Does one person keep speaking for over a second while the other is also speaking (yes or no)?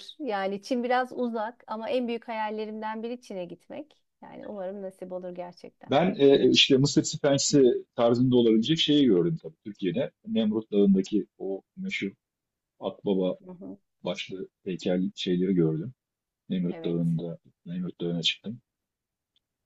no